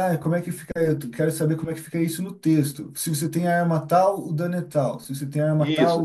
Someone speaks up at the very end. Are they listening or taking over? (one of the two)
taking over